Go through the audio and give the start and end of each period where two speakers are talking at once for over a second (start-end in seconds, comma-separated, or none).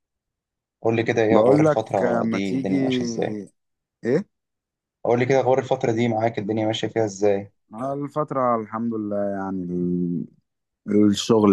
1.3-2.8